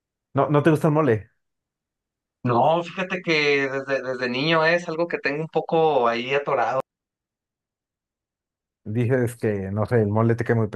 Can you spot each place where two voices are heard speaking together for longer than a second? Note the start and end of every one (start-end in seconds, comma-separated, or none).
none